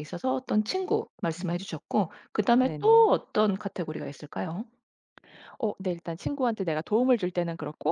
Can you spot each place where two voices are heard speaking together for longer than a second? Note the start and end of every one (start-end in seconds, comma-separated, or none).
none